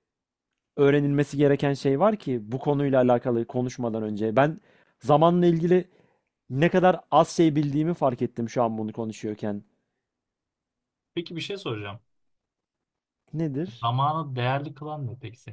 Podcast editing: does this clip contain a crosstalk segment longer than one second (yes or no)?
no